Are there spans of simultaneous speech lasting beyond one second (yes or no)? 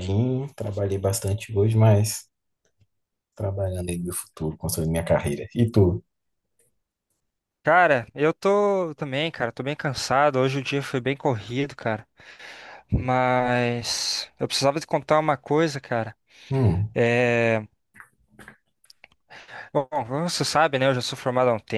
no